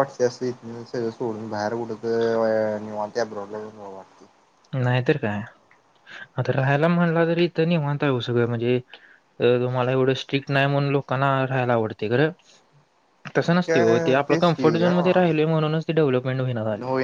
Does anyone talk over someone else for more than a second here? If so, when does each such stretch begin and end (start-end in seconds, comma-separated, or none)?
13.5-15.4